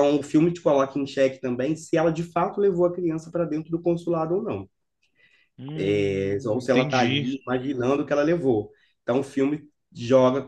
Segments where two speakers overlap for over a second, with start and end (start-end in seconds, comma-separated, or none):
5.8-7.3